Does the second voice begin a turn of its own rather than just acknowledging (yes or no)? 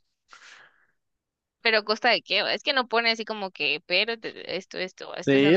yes